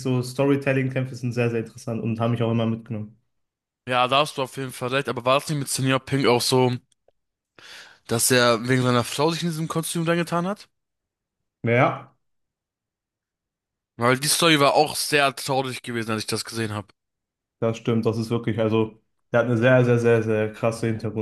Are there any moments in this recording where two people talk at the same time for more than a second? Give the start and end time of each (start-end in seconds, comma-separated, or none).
none